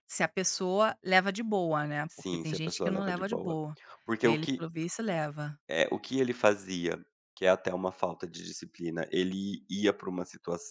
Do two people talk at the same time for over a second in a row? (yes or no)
yes